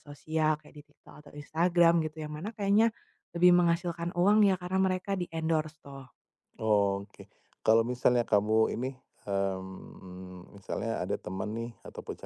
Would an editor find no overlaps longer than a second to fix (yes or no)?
yes